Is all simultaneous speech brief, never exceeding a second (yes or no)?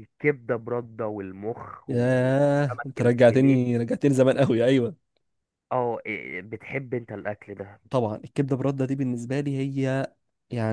no